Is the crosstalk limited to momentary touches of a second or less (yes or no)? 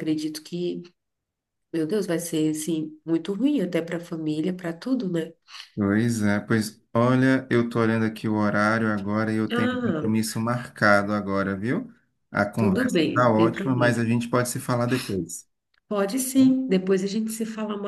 no